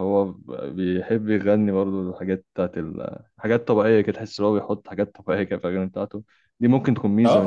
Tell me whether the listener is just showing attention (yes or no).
no